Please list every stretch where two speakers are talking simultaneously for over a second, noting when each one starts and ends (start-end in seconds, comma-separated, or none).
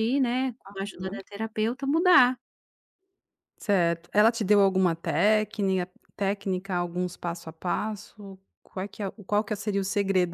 none